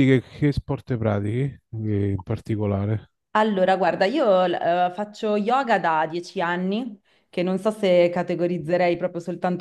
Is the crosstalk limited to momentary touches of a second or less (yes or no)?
yes